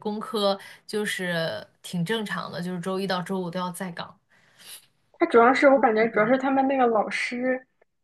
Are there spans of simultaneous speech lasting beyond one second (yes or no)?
no